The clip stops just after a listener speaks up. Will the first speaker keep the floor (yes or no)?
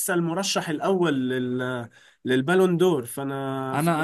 no